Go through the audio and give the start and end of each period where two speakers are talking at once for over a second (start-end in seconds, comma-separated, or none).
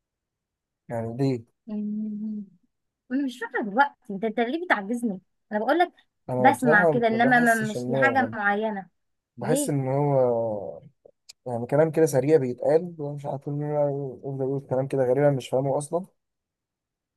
6.4-8.3